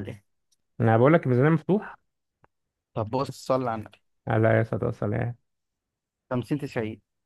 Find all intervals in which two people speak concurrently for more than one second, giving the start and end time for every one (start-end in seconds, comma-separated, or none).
none